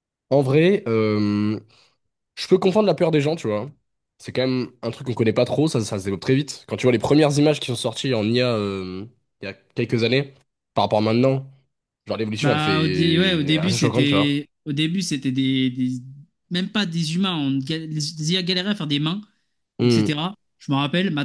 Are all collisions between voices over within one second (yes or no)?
no